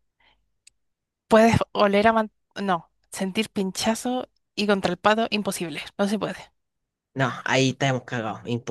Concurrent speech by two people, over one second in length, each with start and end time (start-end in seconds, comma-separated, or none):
none